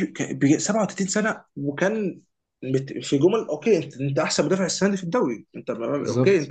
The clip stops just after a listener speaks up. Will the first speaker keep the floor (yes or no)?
yes